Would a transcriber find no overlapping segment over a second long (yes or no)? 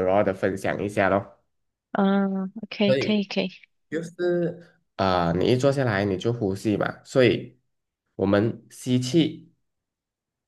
yes